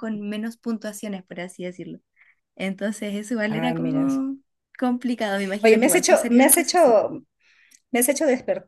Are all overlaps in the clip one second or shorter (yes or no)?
no